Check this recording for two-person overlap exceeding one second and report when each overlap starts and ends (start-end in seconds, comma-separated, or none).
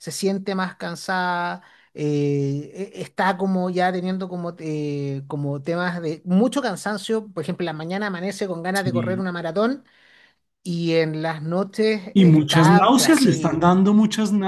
12.1-13.6